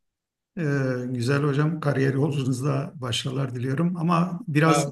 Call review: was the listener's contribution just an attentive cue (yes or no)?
yes